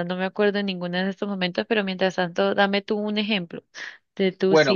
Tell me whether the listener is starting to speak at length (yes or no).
no